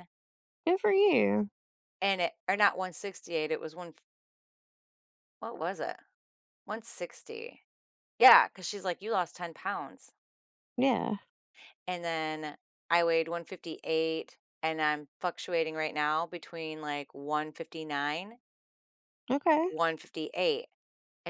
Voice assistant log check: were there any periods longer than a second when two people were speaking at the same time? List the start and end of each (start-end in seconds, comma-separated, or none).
none